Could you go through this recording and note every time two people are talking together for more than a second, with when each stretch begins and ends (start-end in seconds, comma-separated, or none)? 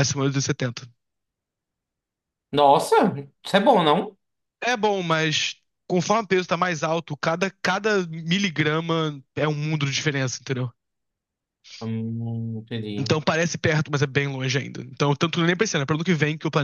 none